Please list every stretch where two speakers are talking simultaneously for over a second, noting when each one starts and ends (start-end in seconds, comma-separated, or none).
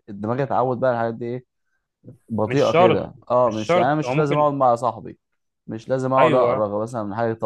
2.5-4.5